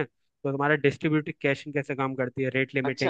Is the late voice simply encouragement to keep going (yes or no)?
no